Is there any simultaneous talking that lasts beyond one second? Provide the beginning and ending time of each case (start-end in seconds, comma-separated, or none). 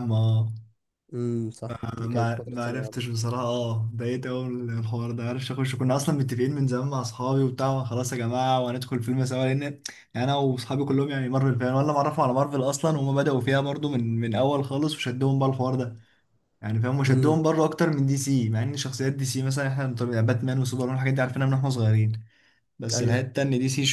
1.7-3.1